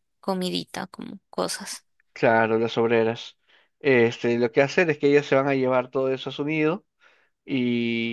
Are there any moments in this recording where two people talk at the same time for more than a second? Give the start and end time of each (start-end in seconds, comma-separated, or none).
none